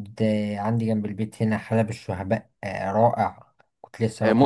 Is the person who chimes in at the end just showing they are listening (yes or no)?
no